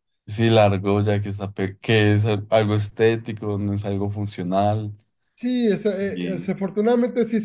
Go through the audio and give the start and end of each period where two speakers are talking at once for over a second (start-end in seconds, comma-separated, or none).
none